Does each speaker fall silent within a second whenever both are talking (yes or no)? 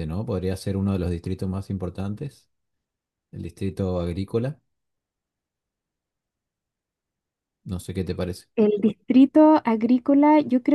yes